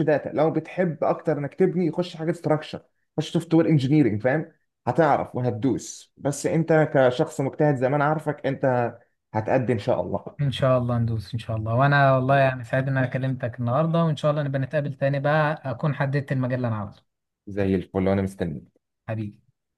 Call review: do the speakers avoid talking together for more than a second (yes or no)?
yes